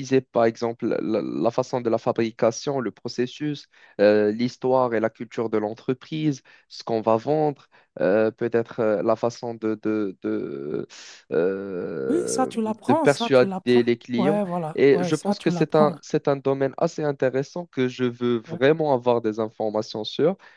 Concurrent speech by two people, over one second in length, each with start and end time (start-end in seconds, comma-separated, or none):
12.1-15.9